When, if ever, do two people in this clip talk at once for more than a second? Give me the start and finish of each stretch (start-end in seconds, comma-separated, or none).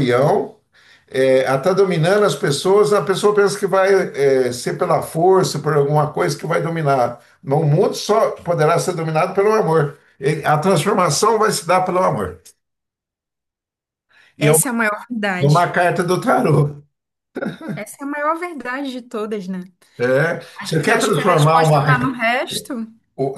20.6-21.8